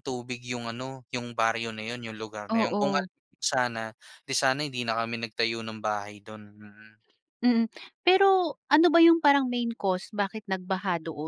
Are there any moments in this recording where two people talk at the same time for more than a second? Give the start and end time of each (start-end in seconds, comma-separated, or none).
none